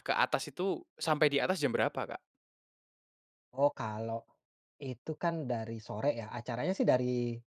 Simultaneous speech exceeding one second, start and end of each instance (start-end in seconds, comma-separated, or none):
none